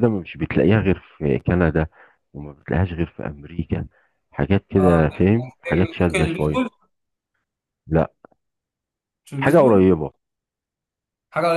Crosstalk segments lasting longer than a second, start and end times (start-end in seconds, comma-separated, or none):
4.8-6.6